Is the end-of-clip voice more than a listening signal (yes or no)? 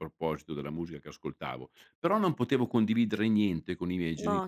no